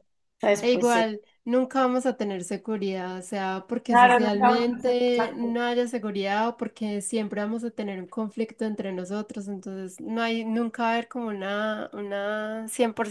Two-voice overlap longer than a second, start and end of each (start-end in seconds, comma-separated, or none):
3.9-5.6